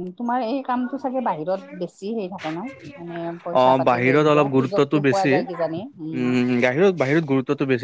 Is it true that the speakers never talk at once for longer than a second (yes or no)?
no